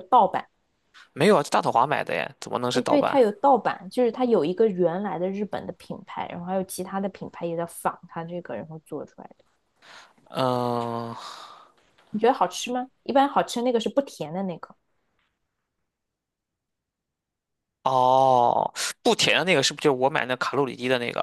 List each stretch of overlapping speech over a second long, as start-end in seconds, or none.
none